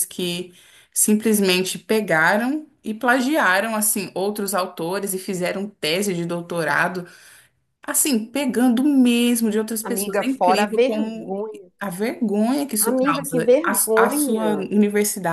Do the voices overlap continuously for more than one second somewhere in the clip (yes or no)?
yes